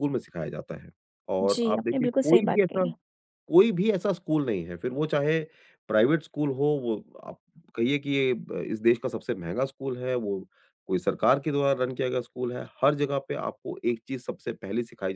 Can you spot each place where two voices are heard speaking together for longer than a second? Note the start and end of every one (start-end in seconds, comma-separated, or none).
1.4-2.9